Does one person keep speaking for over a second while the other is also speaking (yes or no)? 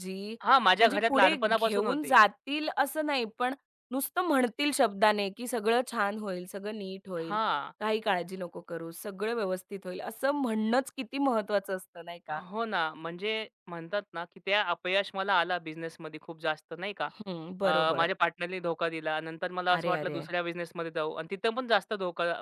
yes